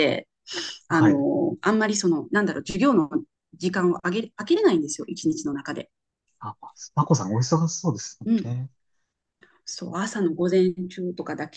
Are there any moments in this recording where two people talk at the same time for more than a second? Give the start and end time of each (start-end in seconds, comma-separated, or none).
none